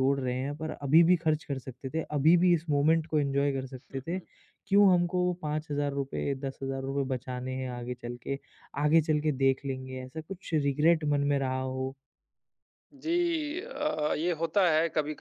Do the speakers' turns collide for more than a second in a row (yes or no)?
no